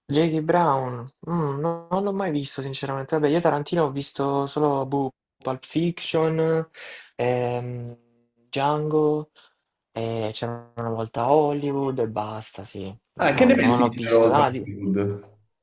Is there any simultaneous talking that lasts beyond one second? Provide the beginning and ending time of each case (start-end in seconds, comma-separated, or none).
13.2-14.7